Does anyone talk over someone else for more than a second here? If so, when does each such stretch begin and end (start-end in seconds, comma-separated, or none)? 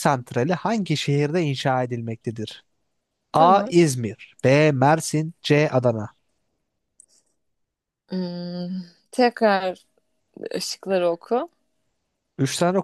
none